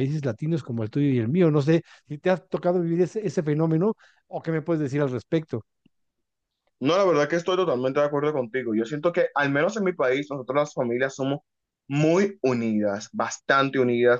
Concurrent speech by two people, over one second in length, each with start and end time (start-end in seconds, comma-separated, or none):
none